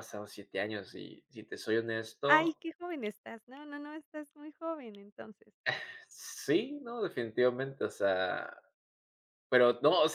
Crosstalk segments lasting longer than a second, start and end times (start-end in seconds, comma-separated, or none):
none